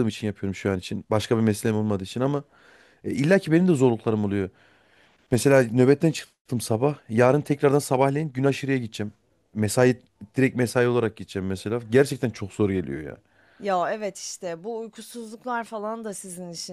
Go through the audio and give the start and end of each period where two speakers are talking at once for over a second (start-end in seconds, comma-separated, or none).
none